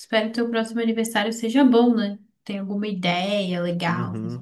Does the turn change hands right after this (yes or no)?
yes